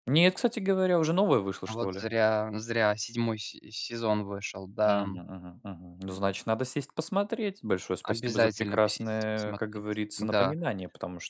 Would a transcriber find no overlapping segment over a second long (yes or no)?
no